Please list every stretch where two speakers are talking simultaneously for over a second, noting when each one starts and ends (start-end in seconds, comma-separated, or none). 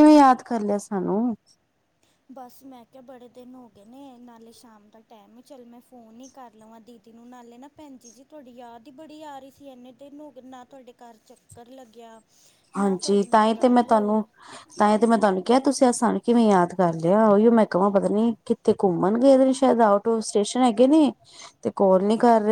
none